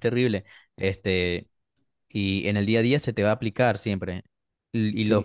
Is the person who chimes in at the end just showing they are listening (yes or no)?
yes